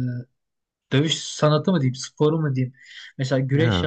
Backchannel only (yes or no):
yes